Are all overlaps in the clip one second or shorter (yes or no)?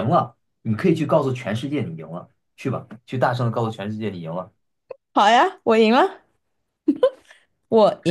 yes